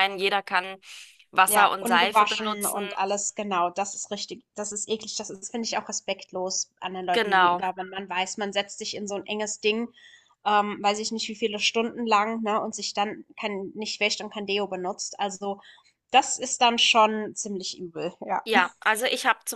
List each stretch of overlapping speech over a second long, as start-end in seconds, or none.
1.4-2.8